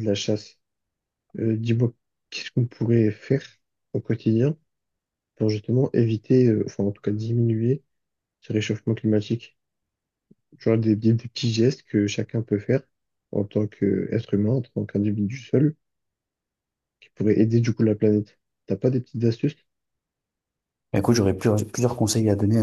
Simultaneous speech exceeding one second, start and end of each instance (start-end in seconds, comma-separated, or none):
none